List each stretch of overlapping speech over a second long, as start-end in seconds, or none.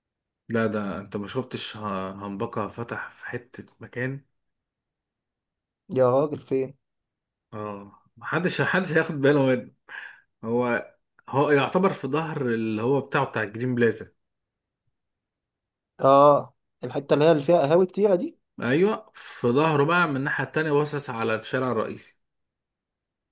none